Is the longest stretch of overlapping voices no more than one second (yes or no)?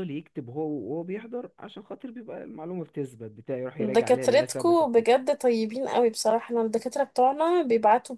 no